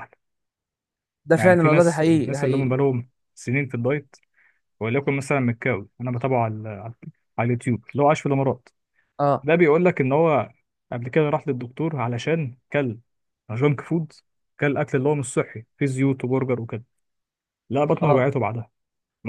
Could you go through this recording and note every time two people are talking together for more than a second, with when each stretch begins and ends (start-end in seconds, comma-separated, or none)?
1.4-2.7